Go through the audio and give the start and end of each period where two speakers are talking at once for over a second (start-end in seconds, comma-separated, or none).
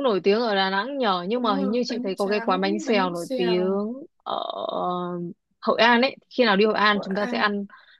1.4-3.8